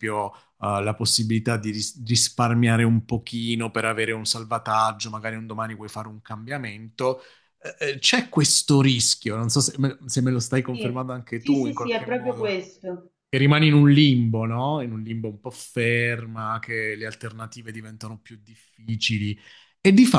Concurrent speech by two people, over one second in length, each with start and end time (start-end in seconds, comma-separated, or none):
10.7-12.5